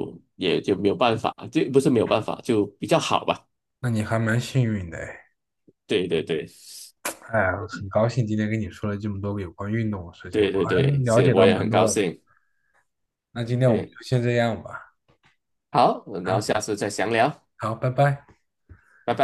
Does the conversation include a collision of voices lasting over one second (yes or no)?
yes